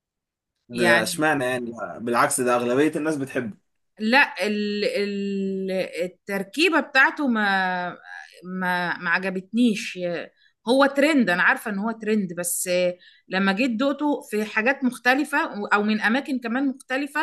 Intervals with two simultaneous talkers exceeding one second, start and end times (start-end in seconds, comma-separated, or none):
none